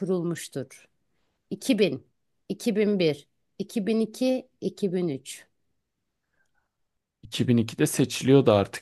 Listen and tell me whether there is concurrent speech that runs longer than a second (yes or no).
no